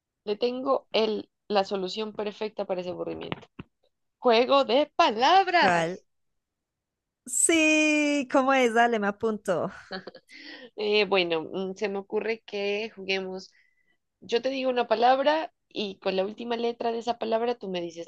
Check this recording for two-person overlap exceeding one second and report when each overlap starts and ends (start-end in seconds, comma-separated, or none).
none